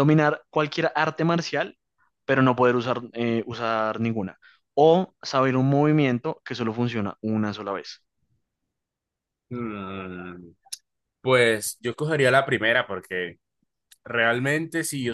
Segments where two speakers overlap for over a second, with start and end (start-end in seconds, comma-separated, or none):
none